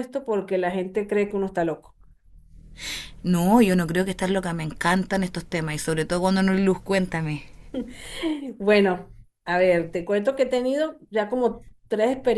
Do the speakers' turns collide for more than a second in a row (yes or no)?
no